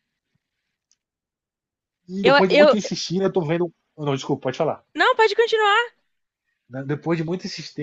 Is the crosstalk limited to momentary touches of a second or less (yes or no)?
yes